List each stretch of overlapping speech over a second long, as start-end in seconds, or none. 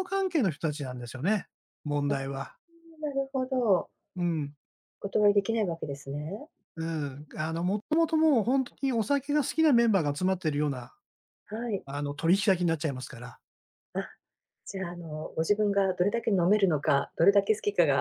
none